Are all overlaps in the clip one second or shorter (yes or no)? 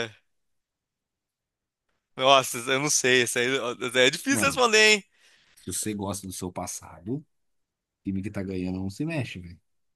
yes